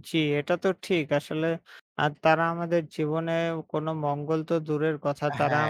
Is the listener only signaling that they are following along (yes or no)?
yes